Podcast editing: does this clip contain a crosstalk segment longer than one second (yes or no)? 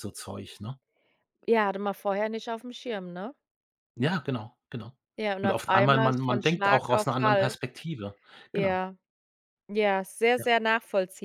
yes